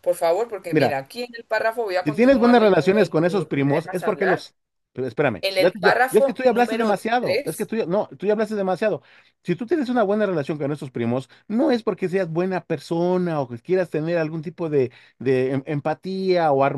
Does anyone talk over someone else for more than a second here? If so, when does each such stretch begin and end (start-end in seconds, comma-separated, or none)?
2.0-4.5, 5.4-7.7